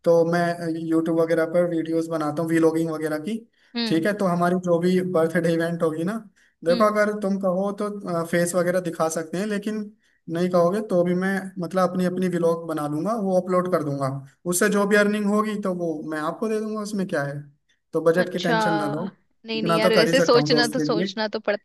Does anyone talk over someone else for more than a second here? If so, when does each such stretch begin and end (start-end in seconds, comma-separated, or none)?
19.6-21.1